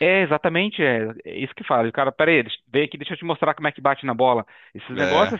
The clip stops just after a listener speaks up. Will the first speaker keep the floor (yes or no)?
yes